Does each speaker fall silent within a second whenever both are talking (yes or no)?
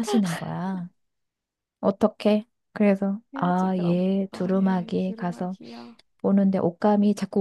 no